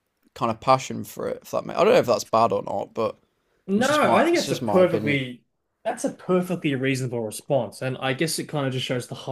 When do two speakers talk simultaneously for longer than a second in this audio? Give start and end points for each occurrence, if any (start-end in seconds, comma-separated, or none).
3.8-5.2